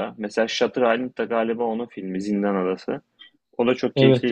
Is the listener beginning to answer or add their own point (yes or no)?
yes